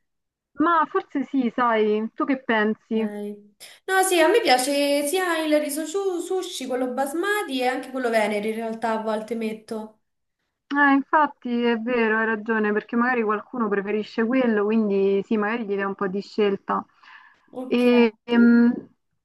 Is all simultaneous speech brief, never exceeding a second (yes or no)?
yes